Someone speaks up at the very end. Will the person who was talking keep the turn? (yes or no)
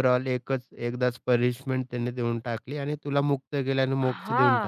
no